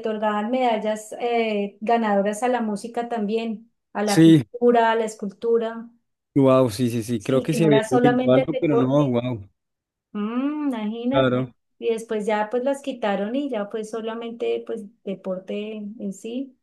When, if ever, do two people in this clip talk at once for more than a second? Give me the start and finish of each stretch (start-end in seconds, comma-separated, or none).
7.2-9.2